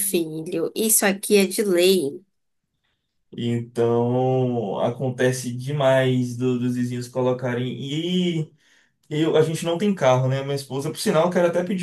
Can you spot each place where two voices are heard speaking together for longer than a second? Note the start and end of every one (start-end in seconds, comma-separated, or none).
none